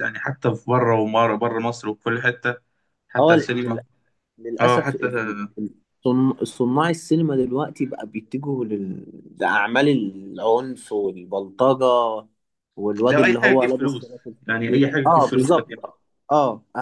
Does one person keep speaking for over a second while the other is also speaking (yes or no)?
yes